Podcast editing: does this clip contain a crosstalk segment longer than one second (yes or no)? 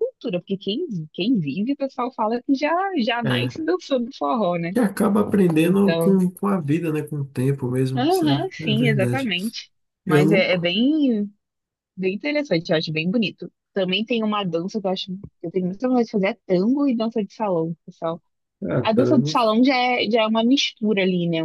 yes